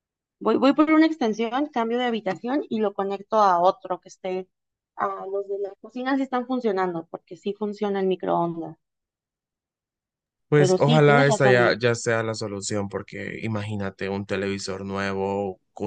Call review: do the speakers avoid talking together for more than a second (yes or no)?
no